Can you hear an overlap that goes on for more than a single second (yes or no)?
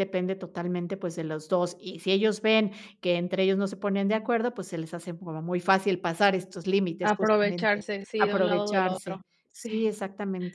yes